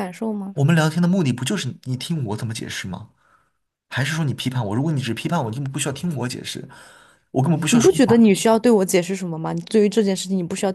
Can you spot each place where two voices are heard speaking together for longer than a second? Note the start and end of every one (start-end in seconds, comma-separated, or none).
none